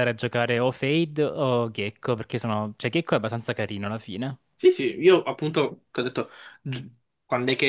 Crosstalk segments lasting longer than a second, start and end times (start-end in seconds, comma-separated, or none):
none